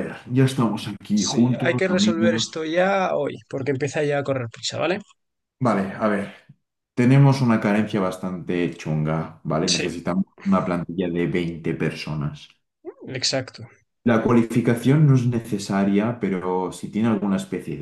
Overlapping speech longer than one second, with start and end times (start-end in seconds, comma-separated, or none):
1.1-2.6